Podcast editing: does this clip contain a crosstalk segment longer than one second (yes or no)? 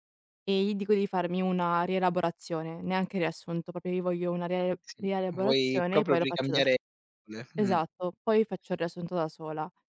yes